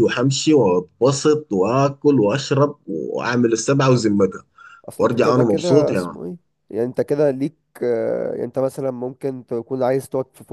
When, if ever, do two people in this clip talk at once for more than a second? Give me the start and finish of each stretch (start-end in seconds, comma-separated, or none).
5.0-6.2